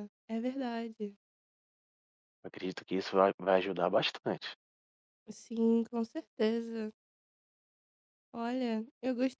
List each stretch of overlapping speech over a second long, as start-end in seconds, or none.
none